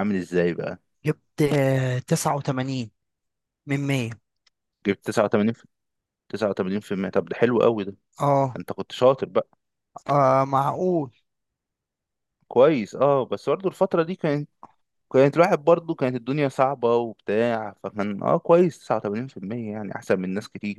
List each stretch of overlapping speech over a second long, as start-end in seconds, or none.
none